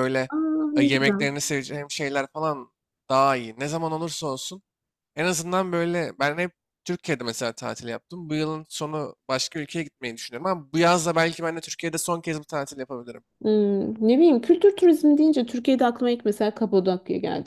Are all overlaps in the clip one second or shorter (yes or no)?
yes